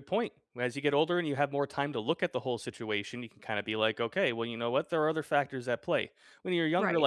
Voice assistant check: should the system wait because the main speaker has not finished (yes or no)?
yes